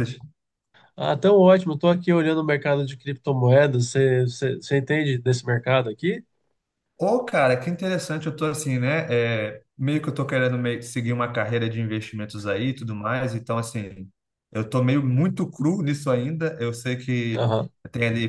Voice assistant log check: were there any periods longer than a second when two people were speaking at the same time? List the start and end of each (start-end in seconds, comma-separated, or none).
none